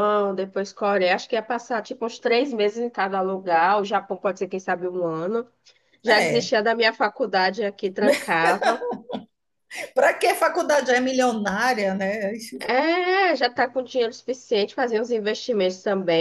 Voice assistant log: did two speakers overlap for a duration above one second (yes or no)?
no